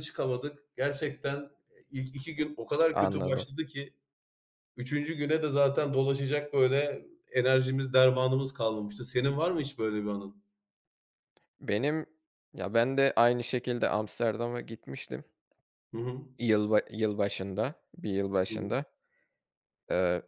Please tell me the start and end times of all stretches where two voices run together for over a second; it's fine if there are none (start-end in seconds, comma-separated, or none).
none